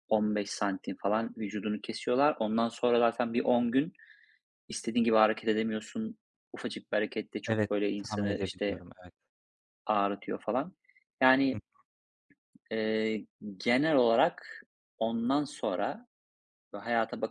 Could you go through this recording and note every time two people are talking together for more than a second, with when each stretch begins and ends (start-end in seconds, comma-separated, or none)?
7.5-8.8